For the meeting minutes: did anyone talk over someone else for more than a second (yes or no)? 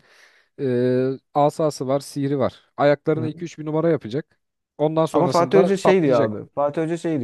yes